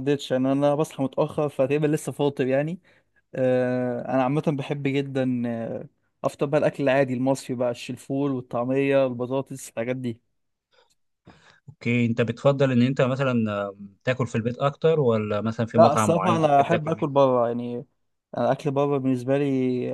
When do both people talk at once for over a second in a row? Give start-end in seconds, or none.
15.8-17.1